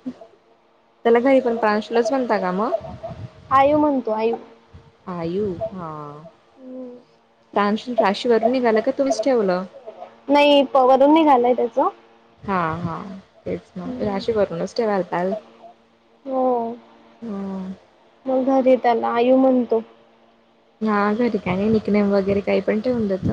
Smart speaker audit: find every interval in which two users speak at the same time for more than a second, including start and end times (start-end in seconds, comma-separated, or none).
none